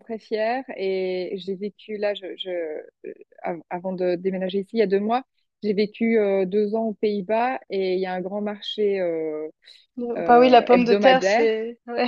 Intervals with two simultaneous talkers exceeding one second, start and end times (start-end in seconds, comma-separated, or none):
10.2-11.5